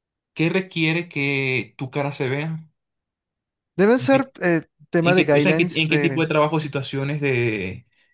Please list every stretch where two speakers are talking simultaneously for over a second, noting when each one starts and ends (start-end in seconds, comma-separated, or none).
5.0-6.2